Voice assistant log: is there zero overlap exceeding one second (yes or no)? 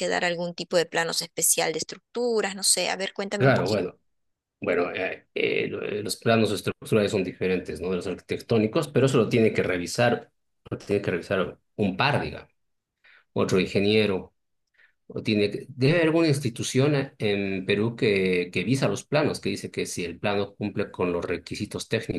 yes